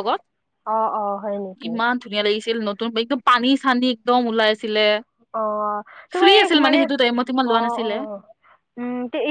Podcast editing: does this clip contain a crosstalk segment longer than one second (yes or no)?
yes